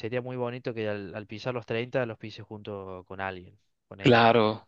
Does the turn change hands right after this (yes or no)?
yes